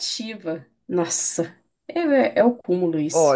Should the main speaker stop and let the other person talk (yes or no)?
yes